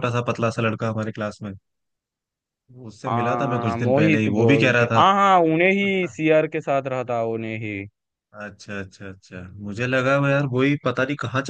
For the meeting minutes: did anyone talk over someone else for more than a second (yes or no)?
yes